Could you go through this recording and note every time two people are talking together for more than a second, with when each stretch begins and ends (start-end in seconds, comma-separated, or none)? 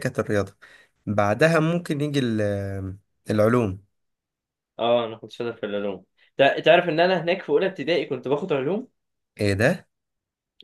none